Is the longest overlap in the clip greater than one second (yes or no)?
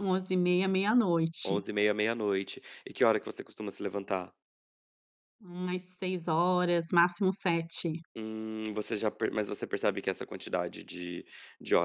no